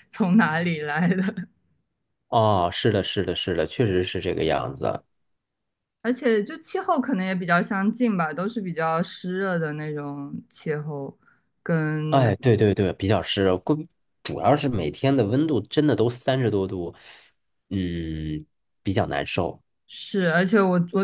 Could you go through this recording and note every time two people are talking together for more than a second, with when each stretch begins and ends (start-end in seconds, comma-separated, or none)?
none